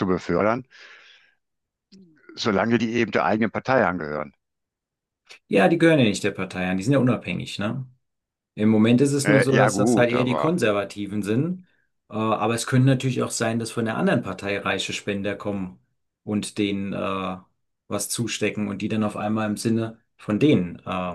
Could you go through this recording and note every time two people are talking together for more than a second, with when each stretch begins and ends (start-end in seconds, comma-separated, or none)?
9.2-10.6